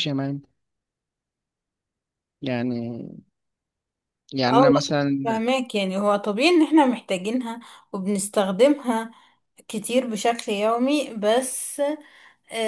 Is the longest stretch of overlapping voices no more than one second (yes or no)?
yes